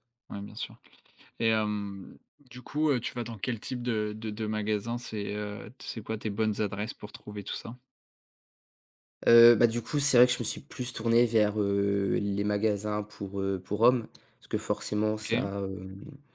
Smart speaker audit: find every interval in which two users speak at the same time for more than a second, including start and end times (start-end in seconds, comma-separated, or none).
none